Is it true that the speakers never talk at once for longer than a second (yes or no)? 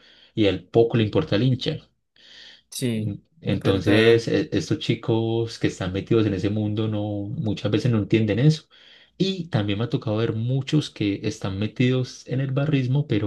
no